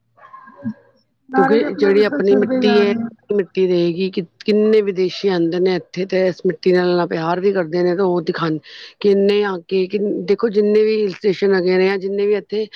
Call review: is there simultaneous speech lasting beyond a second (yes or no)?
yes